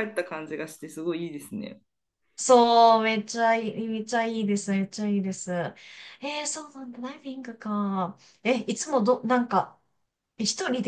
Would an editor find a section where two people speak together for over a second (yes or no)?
no